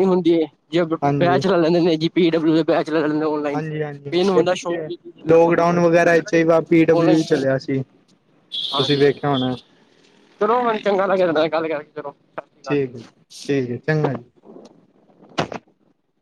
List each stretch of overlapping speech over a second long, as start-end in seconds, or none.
none